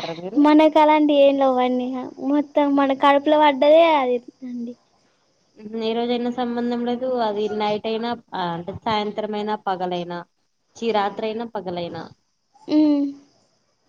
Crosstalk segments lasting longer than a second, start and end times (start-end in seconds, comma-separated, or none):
none